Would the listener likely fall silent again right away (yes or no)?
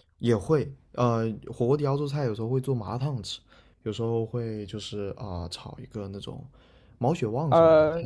no